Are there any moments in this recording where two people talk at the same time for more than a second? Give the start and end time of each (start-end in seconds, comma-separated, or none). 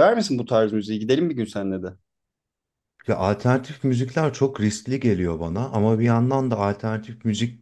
none